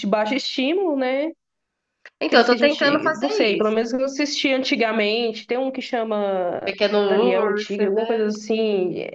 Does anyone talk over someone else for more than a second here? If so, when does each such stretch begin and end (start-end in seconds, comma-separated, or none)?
2.3-3.8, 6.6-8.3